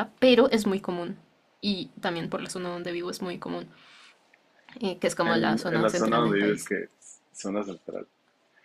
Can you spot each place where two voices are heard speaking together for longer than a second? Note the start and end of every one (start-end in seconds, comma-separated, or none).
5.3-6.7